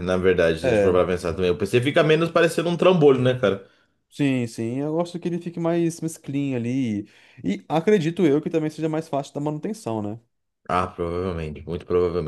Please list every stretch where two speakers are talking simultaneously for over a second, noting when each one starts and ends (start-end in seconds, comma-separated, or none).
none